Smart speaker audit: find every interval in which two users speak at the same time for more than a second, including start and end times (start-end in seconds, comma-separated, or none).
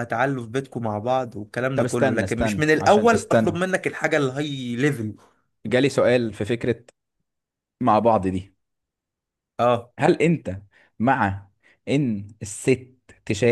1.7-3.6